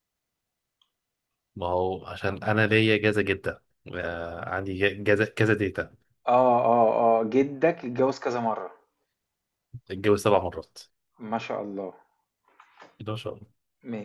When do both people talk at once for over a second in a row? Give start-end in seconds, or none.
none